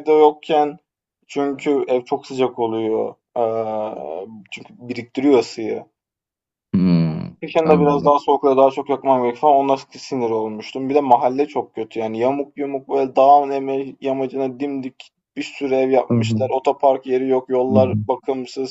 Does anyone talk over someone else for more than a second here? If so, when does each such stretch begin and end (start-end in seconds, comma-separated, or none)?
none